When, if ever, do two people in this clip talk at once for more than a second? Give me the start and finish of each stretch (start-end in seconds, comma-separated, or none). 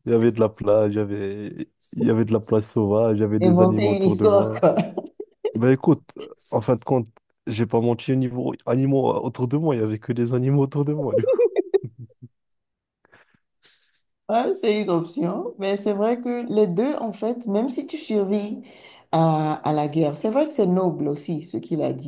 3.4-4.6